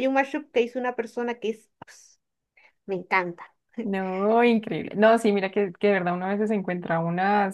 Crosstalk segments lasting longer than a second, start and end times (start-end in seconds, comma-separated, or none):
none